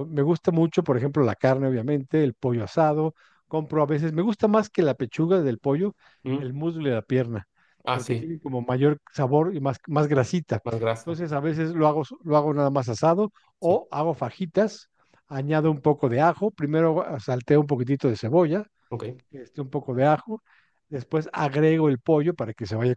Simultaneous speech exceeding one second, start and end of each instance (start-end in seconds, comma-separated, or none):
none